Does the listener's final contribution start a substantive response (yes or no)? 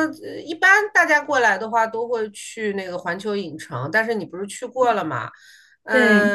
no